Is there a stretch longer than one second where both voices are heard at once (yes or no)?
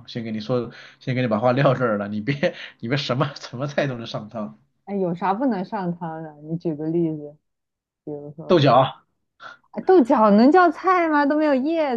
no